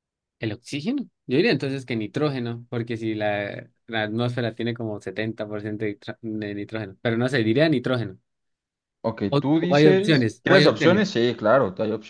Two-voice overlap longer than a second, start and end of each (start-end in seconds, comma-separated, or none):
9.3-11.0